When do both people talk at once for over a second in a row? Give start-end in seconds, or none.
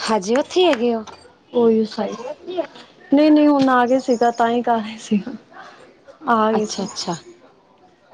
none